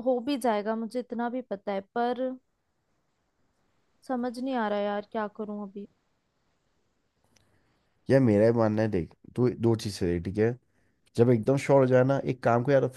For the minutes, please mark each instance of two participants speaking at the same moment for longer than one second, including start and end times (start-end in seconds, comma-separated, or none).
none